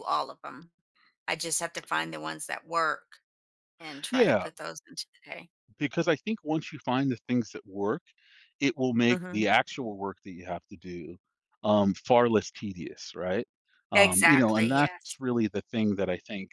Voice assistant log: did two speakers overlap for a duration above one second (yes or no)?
yes